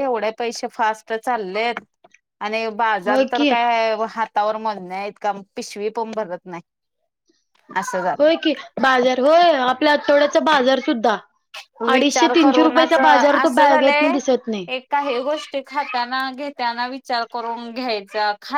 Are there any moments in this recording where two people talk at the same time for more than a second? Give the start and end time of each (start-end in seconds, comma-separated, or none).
11.9-14.1